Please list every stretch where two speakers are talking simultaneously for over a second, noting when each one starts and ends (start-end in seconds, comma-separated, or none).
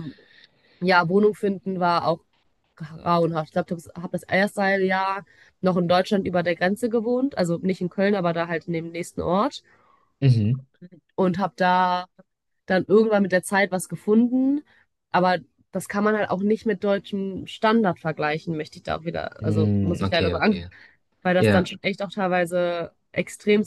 19.4-20.7